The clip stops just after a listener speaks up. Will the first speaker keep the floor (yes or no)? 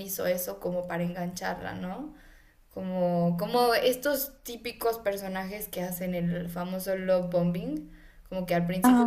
yes